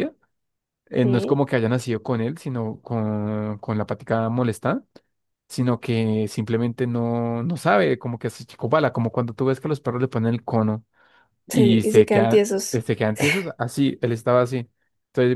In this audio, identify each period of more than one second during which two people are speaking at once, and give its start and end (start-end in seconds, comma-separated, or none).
11.5-12.8